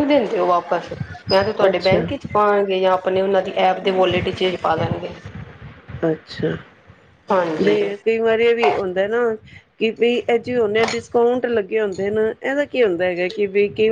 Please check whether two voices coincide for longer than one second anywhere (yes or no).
no